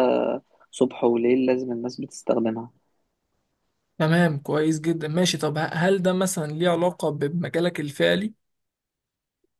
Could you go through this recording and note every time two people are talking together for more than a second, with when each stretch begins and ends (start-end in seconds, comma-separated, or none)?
none